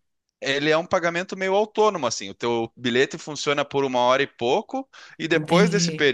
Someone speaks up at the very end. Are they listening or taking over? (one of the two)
listening